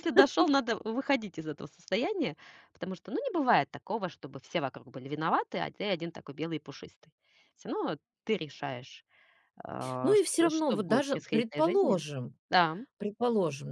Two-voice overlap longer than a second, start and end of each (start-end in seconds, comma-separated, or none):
10.0-12.0